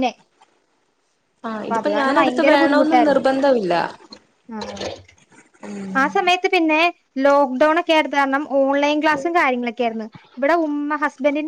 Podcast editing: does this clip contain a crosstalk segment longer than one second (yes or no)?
yes